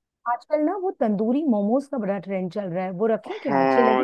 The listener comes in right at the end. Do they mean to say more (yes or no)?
yes